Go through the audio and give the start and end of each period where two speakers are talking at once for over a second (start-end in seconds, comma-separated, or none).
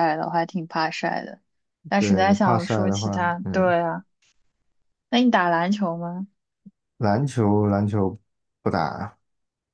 1.9-3.8